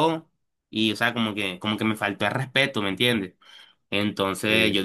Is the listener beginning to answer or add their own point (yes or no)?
no